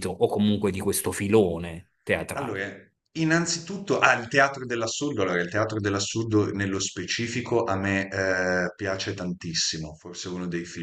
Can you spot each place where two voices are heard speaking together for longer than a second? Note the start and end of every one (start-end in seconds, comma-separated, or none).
none